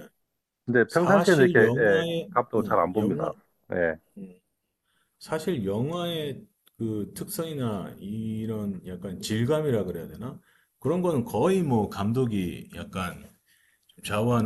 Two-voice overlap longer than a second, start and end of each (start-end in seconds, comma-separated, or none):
0.9-3.3